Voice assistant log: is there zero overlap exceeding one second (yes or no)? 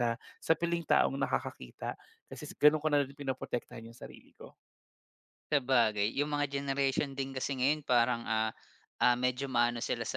yes